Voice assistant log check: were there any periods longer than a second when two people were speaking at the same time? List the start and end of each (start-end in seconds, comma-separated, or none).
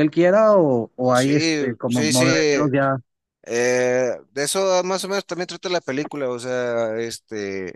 1.1-2.7